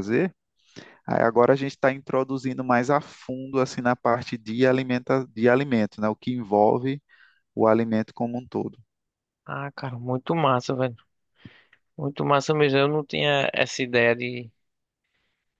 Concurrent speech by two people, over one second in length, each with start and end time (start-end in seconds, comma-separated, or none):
none